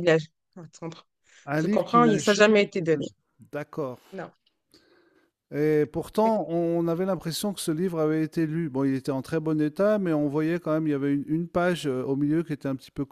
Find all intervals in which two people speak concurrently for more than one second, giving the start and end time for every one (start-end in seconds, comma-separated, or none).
1.6-3.1